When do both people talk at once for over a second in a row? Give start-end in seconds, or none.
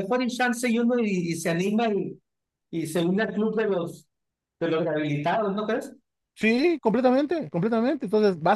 none